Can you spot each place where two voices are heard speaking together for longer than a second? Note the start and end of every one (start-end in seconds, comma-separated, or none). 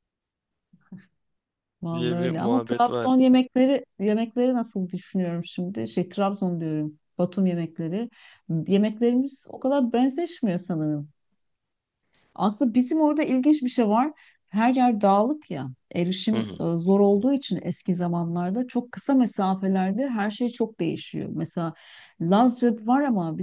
1.9-3.2